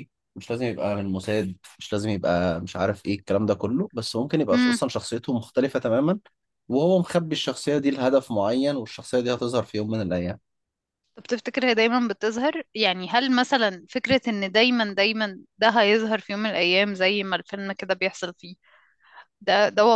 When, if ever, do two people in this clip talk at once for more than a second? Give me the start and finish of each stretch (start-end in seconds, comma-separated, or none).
none